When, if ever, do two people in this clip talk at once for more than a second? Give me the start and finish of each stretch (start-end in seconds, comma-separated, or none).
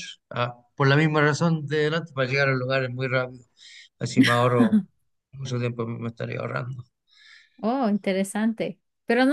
none